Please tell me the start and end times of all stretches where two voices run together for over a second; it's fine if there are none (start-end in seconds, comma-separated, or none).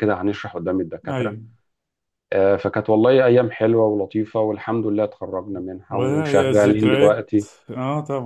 5.9-7.5